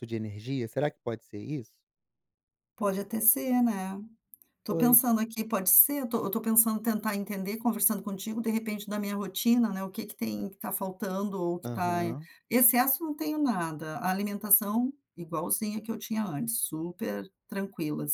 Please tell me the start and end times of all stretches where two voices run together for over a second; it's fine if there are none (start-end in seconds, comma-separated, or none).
none